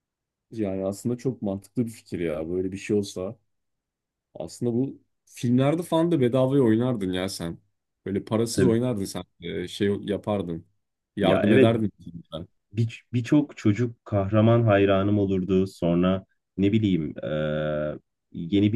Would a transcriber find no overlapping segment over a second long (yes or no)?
yes